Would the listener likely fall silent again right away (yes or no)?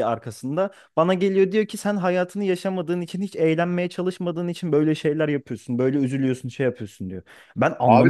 no